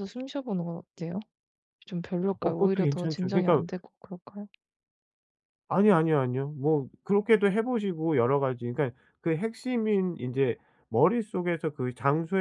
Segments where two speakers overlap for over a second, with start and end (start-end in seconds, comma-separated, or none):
2.4-3.6